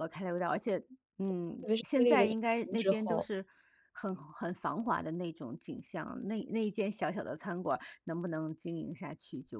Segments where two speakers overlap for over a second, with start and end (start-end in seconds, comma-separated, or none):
1.6-3.3